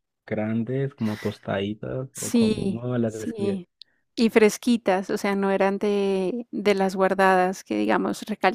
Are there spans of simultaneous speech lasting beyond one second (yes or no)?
yes